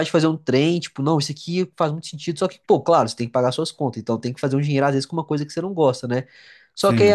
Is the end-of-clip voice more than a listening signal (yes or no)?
no